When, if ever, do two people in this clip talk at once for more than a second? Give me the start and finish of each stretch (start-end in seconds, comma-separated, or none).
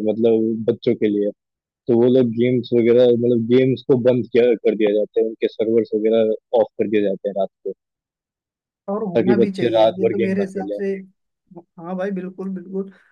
9.2-10.8